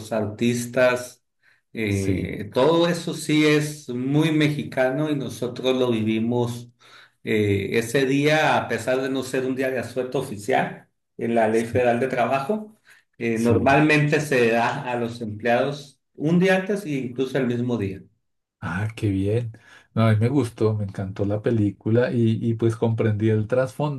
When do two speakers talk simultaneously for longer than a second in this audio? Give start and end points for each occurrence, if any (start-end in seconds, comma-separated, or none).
none